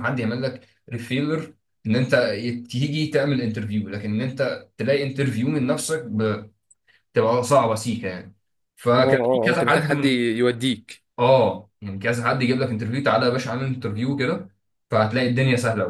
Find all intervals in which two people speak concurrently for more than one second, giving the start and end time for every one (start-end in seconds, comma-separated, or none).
9.0-10.3